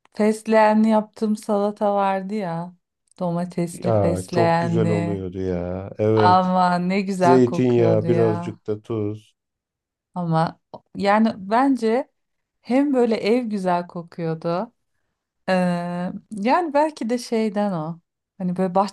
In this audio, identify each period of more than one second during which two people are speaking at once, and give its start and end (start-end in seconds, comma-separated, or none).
3.7-5.2, 7.2-8.6